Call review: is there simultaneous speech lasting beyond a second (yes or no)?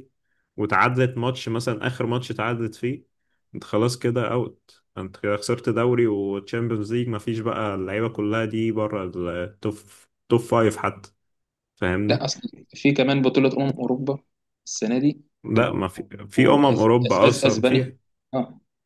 yes